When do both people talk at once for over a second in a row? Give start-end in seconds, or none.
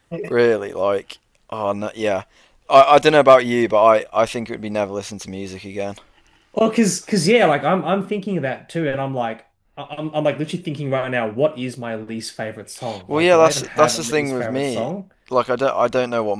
13.1-14.9